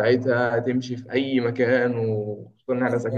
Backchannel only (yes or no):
no